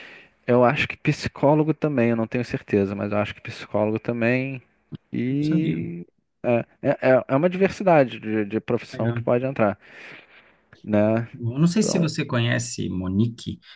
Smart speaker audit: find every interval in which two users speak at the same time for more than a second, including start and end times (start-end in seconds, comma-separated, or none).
none